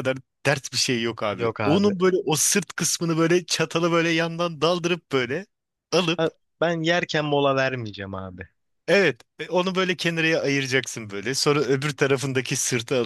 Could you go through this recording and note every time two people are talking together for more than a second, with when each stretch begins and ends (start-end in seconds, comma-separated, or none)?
none